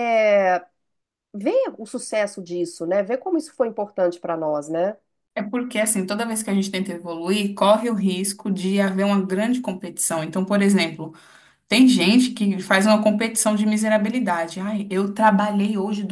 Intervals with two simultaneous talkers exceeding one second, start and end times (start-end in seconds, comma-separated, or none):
none